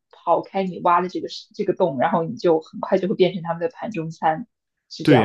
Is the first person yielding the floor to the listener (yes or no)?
yes